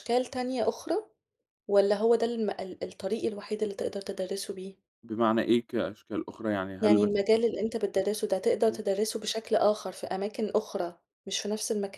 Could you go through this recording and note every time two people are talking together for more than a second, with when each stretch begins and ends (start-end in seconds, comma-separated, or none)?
none